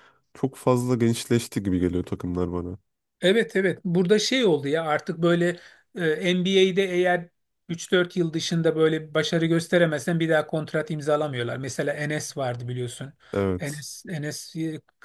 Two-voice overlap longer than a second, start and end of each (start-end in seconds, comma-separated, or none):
none